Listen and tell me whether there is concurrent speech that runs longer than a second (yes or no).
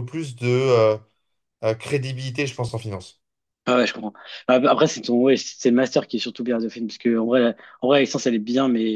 no